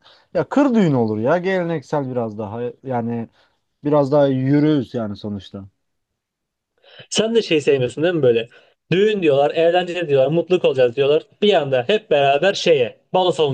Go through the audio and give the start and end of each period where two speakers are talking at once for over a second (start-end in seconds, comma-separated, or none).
none